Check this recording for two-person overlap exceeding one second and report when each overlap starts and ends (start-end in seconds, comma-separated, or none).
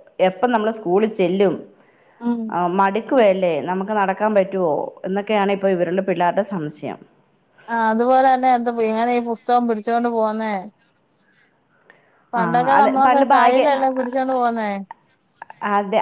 none